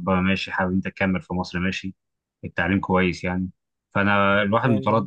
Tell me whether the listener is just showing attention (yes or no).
yes